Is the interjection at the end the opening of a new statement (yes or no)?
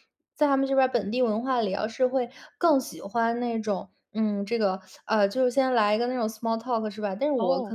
no